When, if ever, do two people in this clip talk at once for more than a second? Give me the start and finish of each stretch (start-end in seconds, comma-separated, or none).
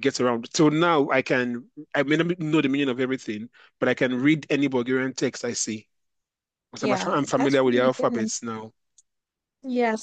6.8-8.3